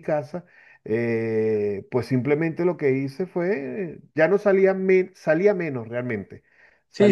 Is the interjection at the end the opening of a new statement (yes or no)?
yes